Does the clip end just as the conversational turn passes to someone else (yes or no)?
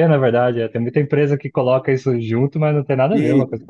yes